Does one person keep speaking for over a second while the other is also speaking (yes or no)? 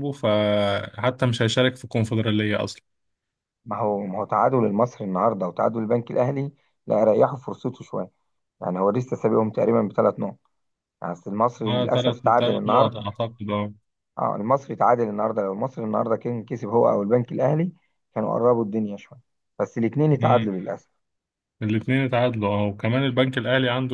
yes